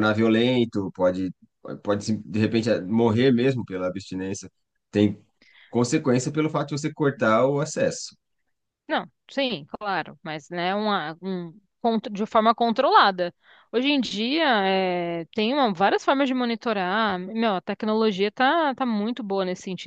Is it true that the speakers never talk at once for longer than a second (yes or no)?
yes